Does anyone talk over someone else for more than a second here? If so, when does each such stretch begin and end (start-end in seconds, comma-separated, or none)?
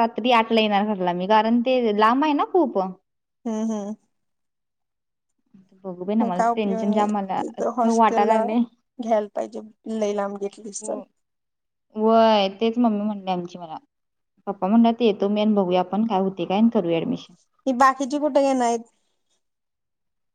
6.2-8.4